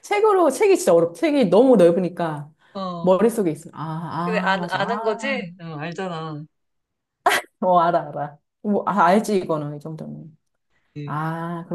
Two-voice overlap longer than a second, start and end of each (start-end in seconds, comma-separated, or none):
4.2-5.4